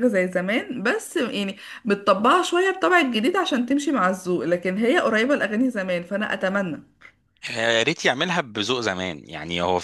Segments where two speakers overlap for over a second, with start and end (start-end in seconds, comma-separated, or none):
none